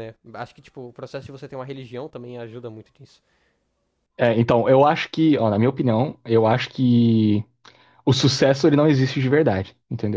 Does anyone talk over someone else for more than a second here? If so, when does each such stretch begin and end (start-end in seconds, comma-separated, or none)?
none